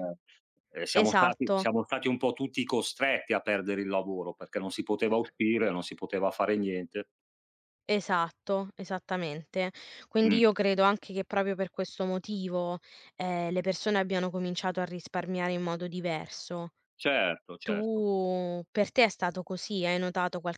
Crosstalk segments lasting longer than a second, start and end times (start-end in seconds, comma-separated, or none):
none